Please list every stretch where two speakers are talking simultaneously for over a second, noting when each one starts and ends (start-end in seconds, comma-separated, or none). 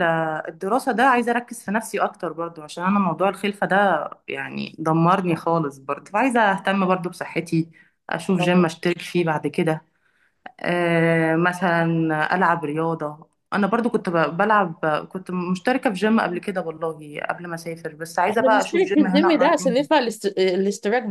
18.3-19.9